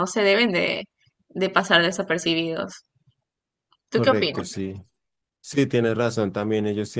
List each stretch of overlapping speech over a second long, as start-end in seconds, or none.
none